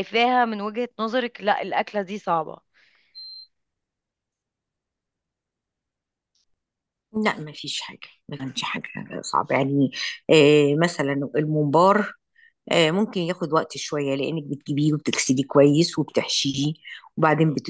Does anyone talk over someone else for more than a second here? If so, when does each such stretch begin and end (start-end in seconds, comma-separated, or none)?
none